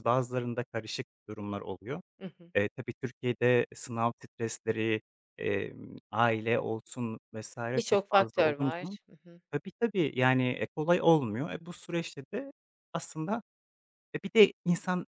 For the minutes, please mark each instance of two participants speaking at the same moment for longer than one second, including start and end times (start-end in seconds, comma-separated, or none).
7.7-9.0